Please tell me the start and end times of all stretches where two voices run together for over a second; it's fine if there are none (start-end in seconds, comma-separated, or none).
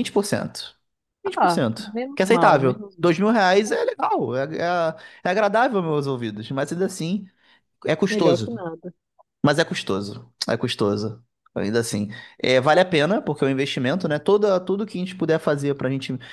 1.4-3.1